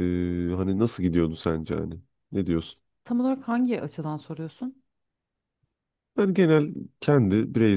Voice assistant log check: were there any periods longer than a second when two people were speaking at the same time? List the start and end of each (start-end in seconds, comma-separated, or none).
none